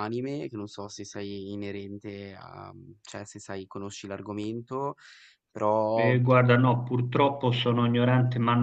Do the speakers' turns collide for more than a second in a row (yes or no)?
no